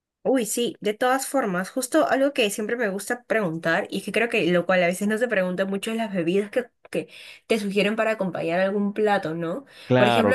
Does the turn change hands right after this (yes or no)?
no